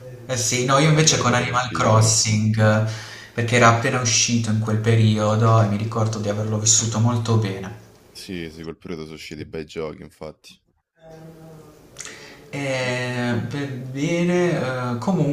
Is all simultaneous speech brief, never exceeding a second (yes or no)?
no